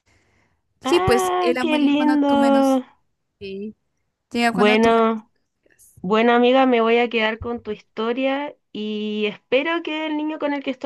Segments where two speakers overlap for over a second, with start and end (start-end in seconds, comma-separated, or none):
0.8-2.8